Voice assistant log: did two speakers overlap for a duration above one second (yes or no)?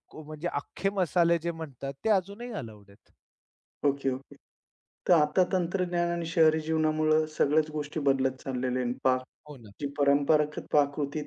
no